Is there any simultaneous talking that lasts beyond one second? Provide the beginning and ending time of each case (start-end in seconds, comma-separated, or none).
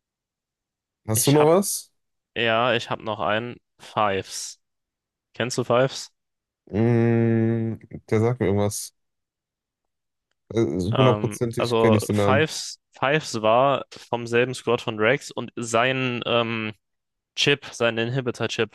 10.9-12.5